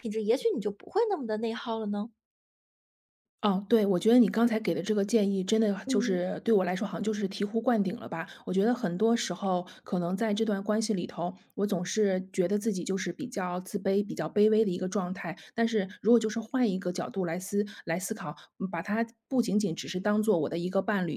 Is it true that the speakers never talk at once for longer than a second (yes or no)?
yes